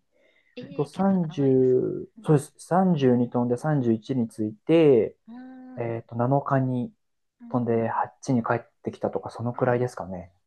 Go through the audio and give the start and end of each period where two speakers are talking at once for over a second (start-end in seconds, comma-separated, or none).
0.7-2.3